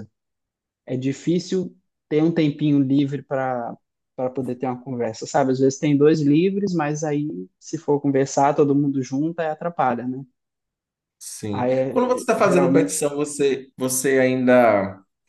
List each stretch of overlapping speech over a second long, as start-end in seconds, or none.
11.5-13.0